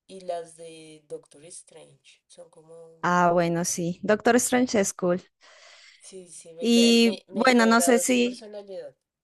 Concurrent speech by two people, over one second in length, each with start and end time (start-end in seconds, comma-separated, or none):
6.6-8.4